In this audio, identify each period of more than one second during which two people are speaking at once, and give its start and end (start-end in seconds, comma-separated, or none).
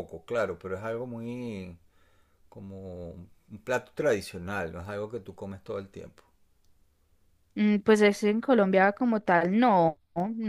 none